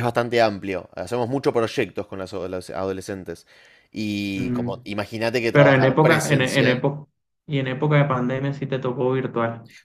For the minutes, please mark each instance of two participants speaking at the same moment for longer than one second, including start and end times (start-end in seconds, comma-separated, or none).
5.5-6.8